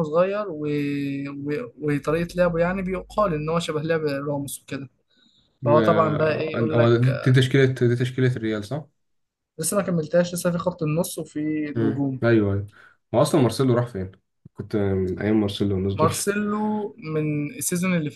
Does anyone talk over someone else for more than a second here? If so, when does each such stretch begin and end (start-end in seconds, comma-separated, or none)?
5.7-7.3